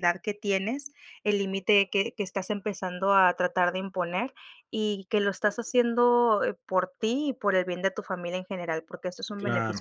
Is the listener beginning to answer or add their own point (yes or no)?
yes